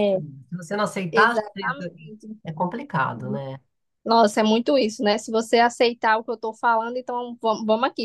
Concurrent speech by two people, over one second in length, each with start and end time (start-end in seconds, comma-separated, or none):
none